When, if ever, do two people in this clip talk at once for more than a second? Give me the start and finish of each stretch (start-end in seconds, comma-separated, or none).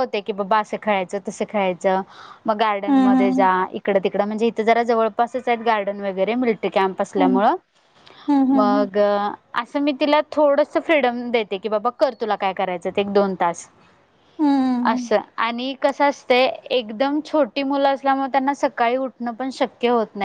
none